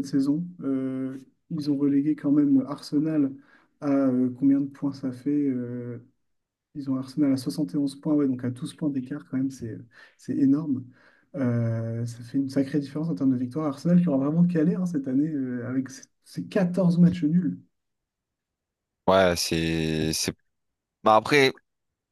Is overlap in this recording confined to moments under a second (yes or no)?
yes